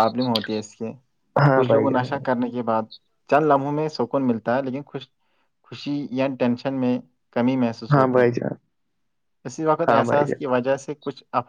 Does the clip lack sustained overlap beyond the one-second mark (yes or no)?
yes